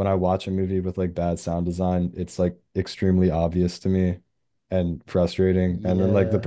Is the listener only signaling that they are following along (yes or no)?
yes